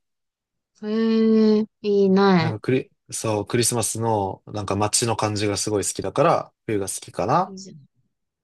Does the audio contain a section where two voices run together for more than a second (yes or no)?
no